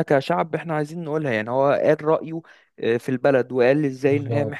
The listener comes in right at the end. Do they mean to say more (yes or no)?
no